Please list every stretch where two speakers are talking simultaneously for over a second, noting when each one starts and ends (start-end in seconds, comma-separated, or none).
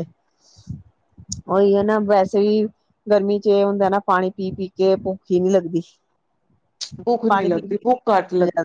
none